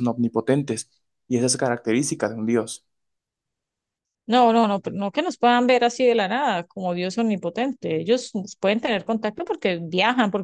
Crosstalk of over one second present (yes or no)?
no